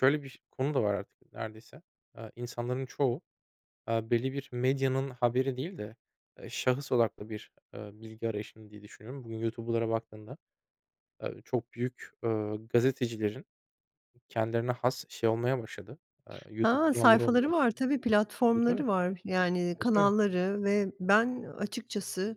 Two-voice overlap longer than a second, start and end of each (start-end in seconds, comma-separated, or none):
16.6-17.8